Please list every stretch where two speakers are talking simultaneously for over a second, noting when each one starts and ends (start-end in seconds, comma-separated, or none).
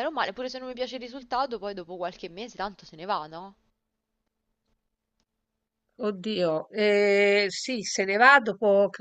none